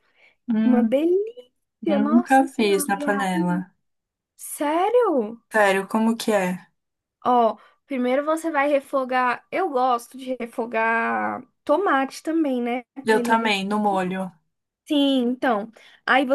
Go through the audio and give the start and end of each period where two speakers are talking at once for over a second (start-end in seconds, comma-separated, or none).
1.8-3.6